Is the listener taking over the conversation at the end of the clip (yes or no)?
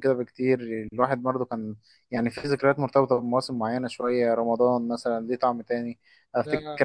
no